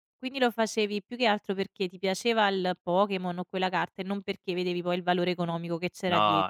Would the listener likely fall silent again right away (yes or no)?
no